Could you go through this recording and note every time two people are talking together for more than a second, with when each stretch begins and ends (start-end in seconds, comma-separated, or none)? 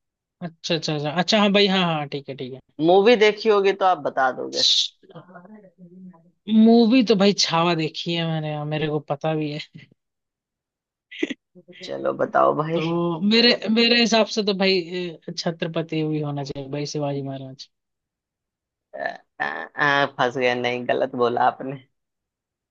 none